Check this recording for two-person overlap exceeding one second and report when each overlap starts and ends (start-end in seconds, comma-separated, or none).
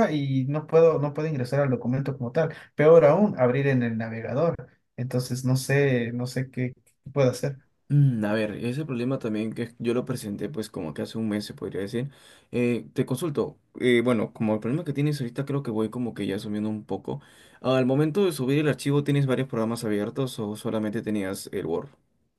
none